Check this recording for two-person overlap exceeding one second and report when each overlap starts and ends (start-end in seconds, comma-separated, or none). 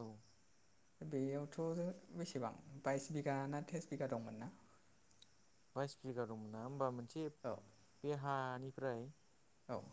none